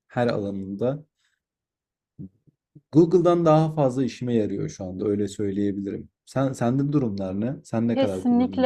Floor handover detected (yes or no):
yes